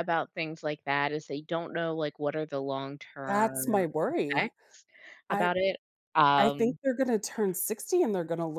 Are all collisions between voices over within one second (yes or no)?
no